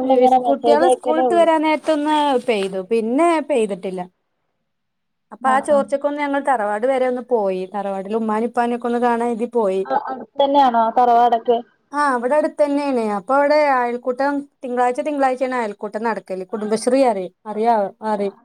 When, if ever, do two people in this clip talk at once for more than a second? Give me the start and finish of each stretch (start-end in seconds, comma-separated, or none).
none